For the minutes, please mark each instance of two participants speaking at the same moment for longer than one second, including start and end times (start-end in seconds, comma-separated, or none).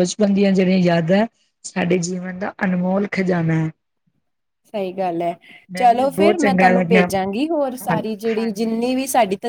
5.8-7.1